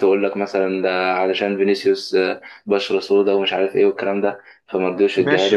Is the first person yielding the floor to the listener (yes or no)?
yes